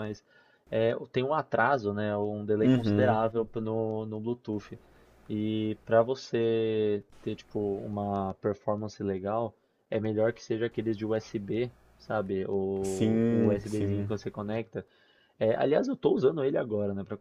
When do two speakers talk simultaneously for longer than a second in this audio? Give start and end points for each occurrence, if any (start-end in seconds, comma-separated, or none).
12.8-14.1